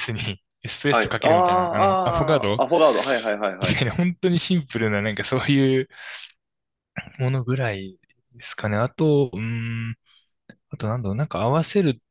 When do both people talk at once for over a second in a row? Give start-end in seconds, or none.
0.9-2.6